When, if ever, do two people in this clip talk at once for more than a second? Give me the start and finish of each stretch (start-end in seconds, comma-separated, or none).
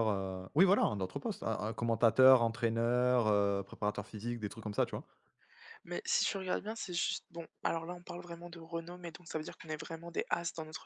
none